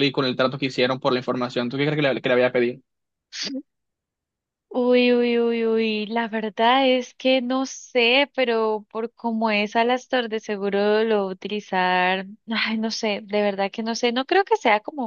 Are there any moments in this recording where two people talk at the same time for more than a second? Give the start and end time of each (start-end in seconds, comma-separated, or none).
none